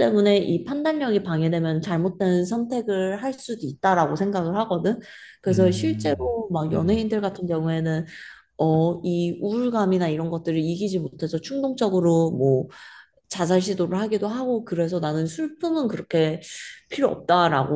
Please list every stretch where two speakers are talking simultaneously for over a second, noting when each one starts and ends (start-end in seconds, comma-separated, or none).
5.5-7.0